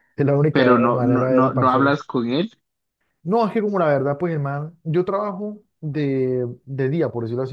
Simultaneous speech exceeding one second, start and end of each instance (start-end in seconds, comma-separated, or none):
0.5-2.0